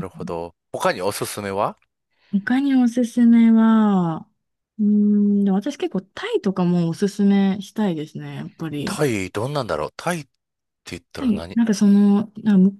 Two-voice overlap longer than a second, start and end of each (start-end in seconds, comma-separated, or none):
none